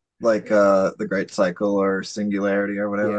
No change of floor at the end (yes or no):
no